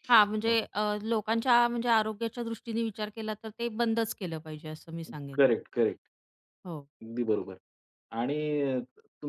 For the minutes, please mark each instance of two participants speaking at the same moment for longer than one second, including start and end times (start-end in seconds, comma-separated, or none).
none